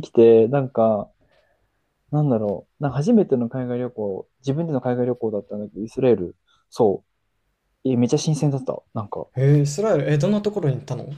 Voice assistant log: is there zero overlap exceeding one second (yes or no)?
yes